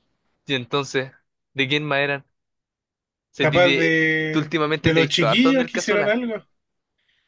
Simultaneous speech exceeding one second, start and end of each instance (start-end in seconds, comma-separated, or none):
3.4-6.3